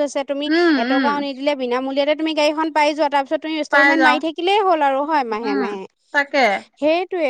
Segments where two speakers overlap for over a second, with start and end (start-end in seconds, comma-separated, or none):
none